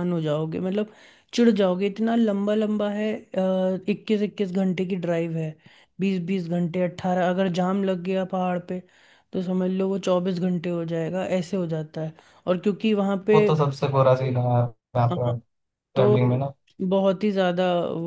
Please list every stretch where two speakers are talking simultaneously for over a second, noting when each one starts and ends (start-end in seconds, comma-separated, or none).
none